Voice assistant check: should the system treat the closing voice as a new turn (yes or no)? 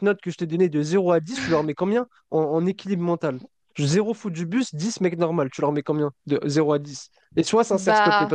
no